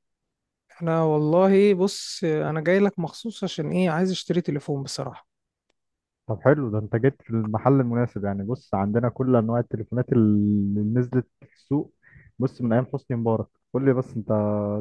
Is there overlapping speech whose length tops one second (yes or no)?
no